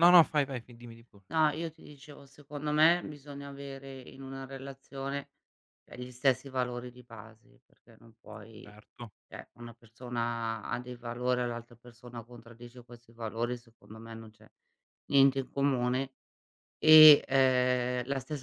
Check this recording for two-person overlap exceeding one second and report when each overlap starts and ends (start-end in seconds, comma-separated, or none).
none